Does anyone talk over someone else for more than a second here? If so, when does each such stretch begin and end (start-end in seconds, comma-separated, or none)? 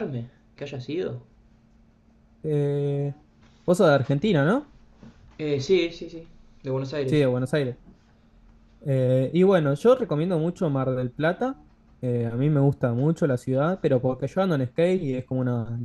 none